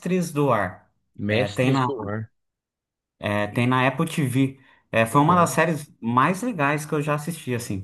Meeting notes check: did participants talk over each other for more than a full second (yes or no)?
no